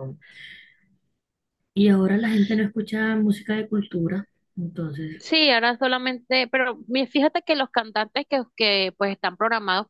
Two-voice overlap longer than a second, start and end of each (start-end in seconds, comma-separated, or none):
none